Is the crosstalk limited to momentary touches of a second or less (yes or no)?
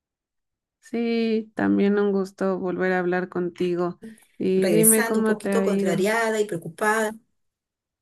no